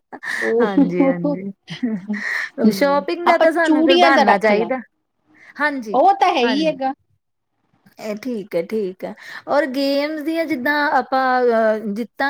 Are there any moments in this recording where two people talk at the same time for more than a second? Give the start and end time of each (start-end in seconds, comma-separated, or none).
2.8-4.7